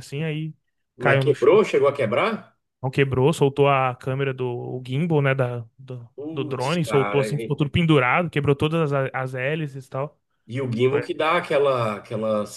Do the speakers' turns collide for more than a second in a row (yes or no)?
yes